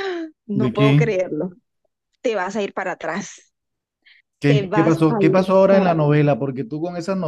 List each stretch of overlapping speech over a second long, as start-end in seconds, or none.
4.5-6.2